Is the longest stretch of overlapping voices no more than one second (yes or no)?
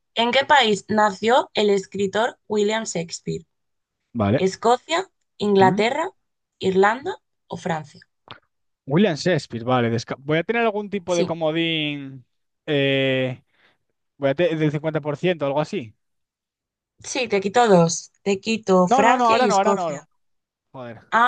no